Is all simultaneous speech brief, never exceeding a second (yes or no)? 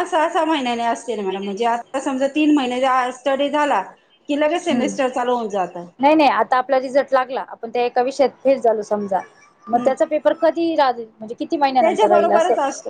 yes